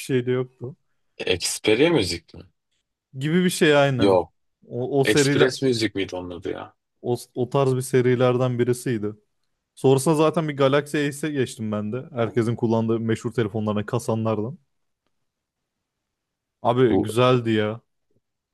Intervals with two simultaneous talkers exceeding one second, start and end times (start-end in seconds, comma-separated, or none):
none